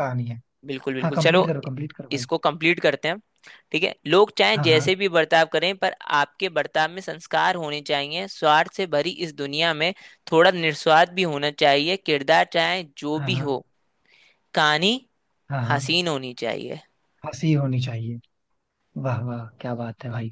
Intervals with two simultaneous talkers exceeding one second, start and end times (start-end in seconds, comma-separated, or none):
none